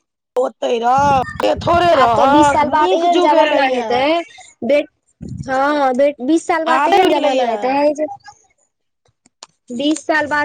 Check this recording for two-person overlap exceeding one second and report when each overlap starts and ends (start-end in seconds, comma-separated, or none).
1.9-3.9